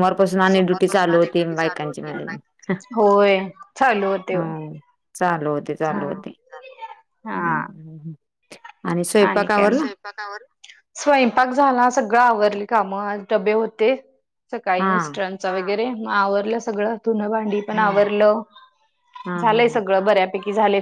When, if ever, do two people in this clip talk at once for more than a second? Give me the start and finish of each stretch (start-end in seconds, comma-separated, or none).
0.5-2.4